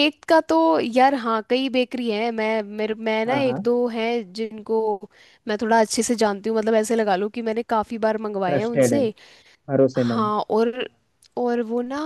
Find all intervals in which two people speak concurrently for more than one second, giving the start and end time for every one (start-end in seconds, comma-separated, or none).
none